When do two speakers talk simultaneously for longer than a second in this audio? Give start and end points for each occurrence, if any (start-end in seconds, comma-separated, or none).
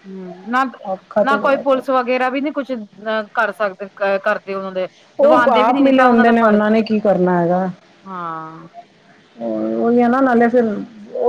5.3-6.6